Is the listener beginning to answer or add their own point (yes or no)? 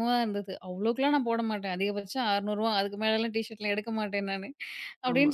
no